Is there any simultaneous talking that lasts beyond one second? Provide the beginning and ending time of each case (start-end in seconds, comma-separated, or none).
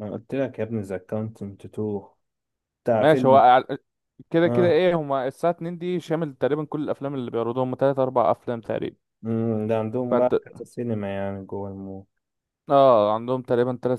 none